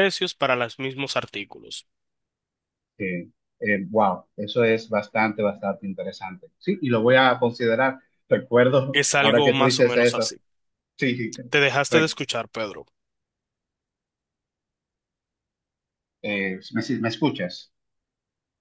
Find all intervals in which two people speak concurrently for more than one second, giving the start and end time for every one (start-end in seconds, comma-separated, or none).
8.9-10.3